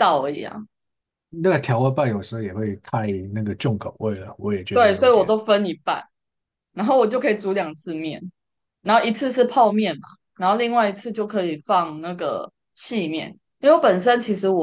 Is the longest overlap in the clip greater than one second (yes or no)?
no